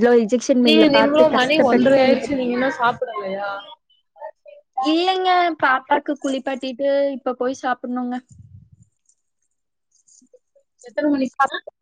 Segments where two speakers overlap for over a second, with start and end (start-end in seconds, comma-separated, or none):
0.7-2.4